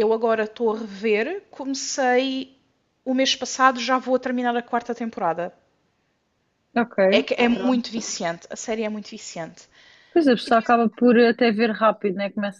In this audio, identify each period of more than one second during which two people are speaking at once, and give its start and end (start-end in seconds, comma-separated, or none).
none